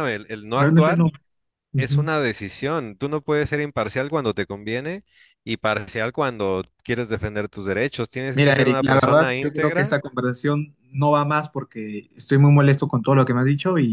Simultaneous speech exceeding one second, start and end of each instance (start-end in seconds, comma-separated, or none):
8.3-10.0